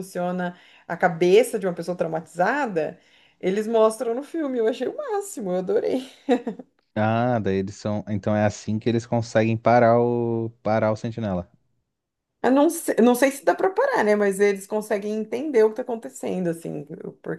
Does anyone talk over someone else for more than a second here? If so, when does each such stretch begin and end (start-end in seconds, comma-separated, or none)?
none